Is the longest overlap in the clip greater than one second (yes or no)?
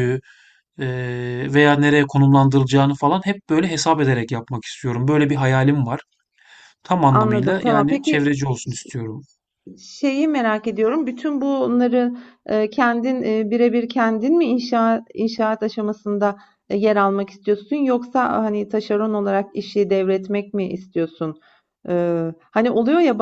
yes